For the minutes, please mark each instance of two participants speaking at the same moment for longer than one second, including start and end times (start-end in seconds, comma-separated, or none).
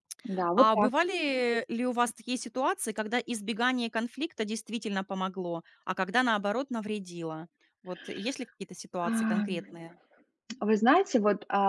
none